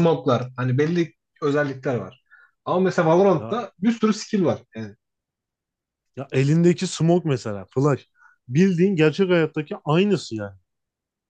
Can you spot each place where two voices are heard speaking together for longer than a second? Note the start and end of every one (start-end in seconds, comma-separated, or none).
none